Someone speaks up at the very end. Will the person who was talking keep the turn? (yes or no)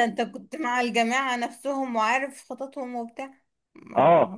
no